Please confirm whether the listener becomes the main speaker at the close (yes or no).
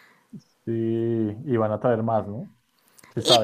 yes